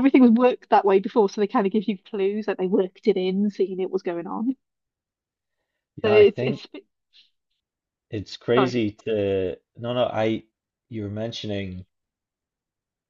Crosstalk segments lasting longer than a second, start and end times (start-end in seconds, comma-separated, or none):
none